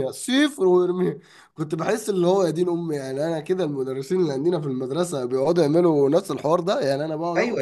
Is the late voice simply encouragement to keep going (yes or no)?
no